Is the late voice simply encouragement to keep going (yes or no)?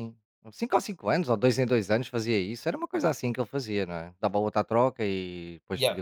no